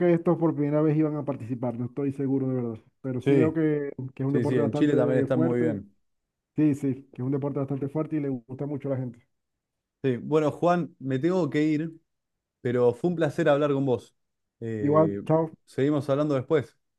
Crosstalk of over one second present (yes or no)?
yes